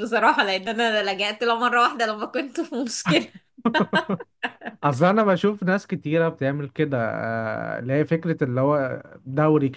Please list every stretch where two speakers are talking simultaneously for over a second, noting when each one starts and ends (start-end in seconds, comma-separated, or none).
none